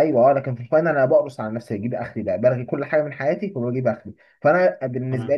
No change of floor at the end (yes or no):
yes